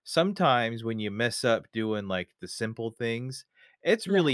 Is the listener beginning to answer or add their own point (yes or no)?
no